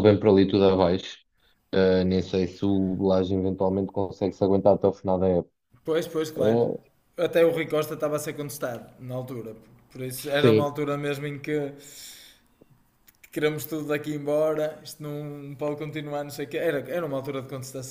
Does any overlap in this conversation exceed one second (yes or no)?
no